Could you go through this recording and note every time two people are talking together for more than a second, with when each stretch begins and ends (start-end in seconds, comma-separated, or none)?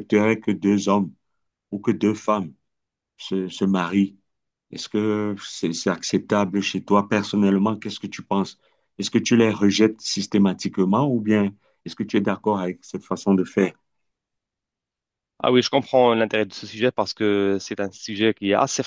none